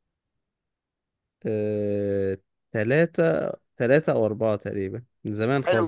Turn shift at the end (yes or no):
yes